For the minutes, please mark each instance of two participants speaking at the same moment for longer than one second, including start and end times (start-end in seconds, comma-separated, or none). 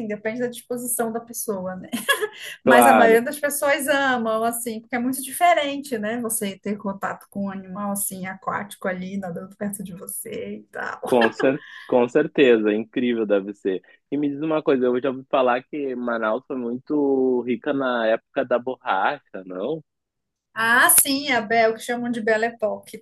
none